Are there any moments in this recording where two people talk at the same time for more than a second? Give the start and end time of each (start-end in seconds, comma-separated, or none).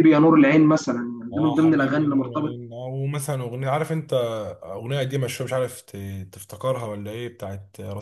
1.3-2.6